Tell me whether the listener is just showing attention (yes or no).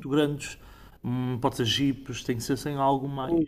no